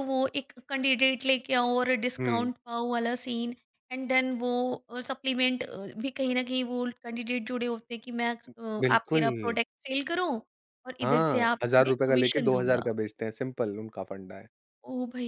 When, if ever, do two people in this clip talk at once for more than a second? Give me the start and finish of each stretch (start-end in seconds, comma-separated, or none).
11.0-12.9